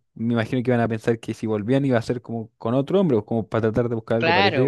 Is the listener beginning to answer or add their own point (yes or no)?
yes